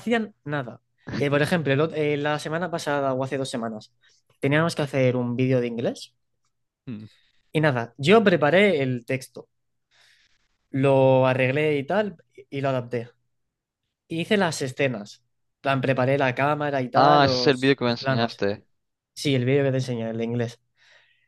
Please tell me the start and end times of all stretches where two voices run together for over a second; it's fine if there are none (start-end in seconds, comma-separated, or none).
16.9-18.4